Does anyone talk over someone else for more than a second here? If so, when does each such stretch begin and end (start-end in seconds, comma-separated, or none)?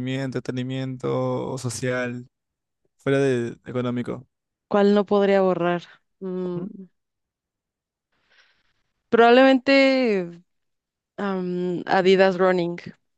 none